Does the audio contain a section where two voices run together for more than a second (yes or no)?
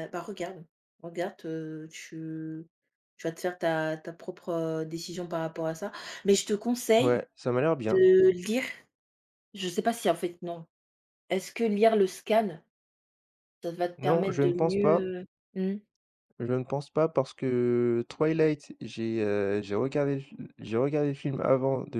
yes